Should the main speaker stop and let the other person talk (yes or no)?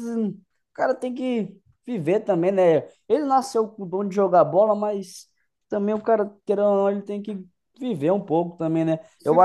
no